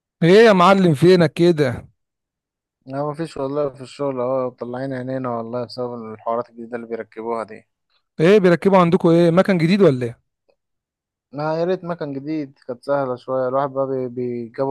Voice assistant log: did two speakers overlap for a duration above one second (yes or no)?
no